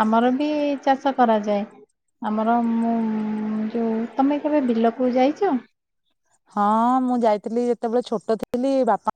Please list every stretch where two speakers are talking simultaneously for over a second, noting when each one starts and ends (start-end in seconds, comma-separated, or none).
none